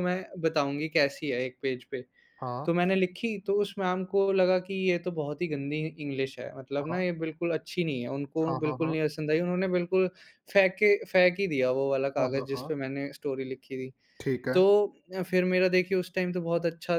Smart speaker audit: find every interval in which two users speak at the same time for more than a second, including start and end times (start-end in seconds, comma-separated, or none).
none